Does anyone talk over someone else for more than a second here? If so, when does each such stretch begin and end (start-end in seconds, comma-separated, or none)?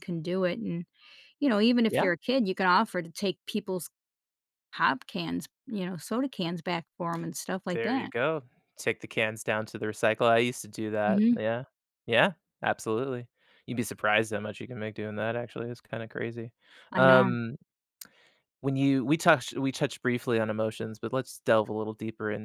none